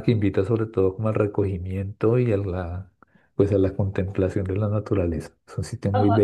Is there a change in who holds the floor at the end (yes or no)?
yes